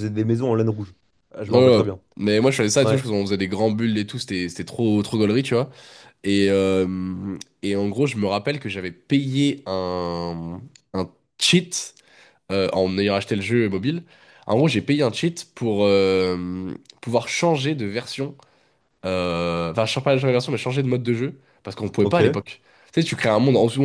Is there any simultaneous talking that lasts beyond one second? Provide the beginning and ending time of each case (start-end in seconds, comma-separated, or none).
none